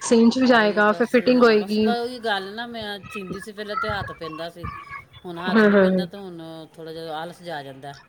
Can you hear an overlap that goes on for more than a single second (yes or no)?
yes